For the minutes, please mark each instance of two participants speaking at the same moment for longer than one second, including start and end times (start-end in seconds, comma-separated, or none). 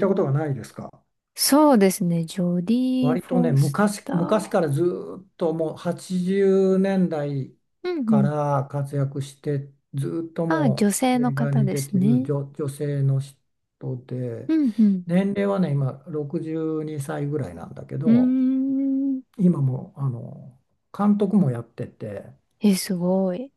3.0-4.7, 10.5-12.3